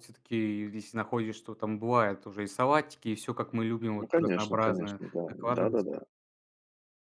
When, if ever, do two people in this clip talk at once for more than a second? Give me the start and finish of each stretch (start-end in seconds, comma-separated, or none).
4.0-5.8